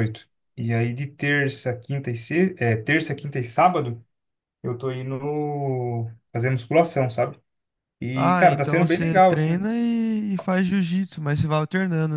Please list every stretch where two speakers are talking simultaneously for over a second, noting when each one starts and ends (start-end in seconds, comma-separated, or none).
8.1-9.6